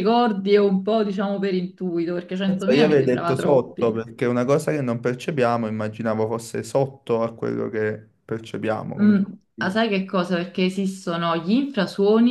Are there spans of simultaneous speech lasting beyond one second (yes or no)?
yes